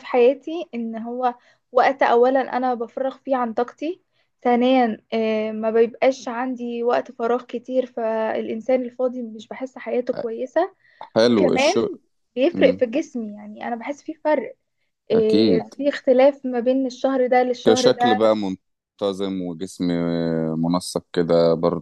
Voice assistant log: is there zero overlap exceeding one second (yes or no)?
yes